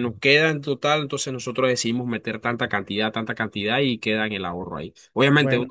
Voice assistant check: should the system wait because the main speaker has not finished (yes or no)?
yes